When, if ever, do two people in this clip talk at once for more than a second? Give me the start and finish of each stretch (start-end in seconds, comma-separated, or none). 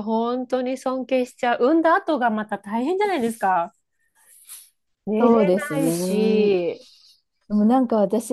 5.2-6.5